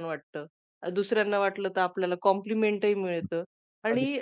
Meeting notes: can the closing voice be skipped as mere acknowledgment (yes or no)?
yes